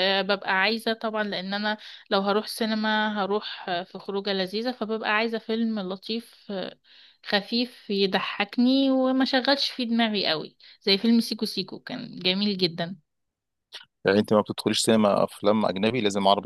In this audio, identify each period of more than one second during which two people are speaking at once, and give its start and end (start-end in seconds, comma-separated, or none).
none